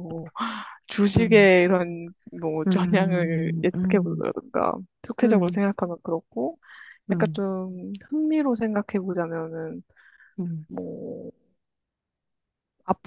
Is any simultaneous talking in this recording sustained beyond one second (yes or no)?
yes